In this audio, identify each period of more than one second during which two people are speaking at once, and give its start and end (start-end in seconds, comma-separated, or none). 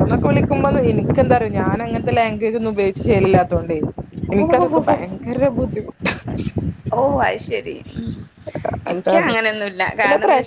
none